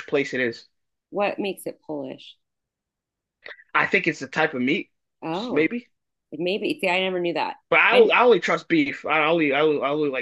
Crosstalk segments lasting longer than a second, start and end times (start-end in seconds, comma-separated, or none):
none